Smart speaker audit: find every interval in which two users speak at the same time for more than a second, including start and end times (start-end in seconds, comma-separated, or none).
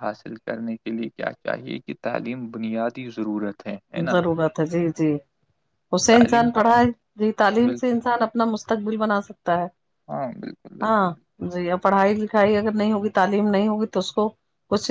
none